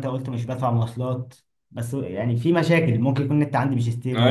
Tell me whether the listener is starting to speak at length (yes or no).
yes